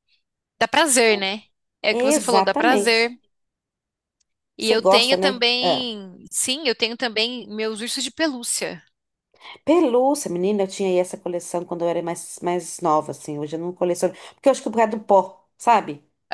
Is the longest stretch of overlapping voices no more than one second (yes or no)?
no